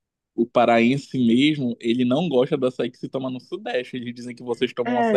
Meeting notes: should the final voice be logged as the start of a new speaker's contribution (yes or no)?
yes